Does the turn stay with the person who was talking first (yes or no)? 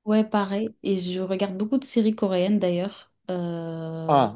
no